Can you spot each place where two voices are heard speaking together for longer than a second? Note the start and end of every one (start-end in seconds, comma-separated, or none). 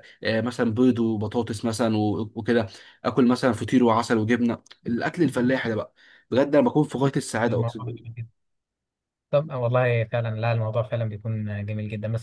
none